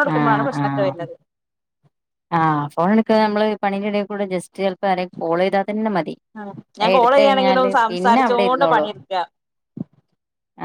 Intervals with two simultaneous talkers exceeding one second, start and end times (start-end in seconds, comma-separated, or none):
6.9-8.9